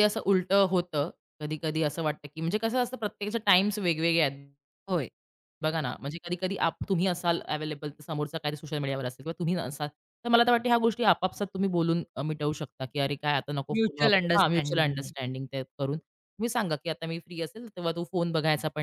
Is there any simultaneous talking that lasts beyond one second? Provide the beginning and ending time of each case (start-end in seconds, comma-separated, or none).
13.8-15.1